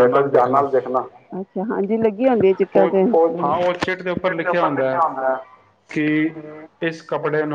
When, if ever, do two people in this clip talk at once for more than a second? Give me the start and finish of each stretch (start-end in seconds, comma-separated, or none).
none